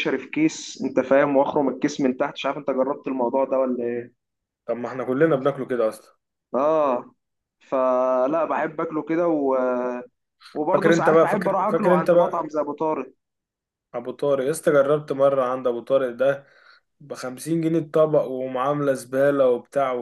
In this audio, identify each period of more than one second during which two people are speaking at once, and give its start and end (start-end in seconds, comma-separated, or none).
10.7-12.5